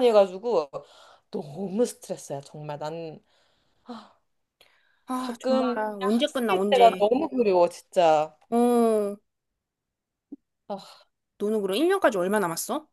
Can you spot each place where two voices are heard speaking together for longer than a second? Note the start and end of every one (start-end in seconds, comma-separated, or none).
5.2-7.0